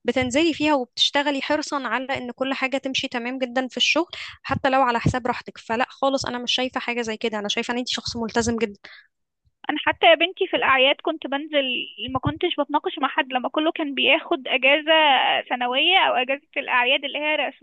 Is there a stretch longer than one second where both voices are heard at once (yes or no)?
no